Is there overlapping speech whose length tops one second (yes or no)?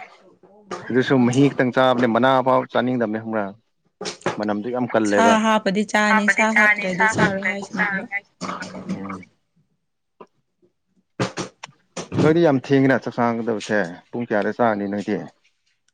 yes